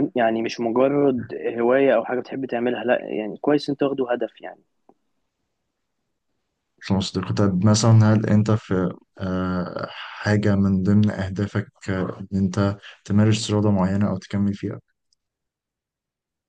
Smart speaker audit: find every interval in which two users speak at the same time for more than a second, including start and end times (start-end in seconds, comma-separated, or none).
none